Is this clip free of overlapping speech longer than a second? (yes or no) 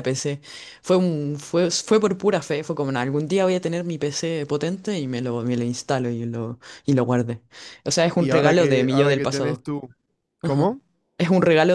no